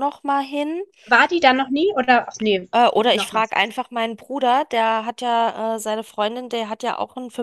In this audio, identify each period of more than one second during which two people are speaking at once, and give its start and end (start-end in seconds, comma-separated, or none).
none